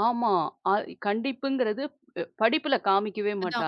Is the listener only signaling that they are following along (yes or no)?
no